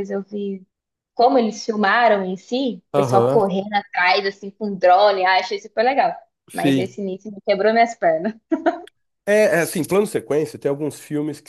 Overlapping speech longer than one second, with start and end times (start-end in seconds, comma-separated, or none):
none